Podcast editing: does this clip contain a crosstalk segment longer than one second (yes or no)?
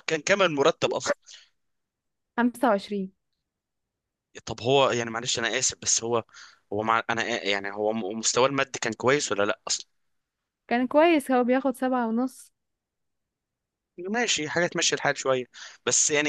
no